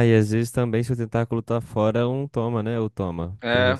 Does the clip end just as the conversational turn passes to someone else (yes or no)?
yes